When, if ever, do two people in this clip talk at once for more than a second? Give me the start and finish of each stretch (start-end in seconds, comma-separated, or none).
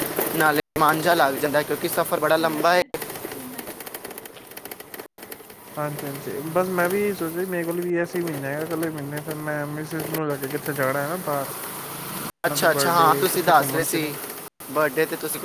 12.5-14.1